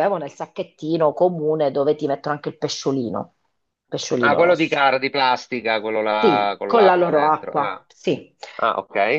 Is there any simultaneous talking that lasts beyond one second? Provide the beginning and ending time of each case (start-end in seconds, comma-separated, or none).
6.2-7.8